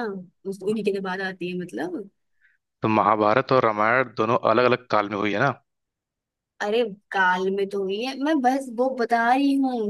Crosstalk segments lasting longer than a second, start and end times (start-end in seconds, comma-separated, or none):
none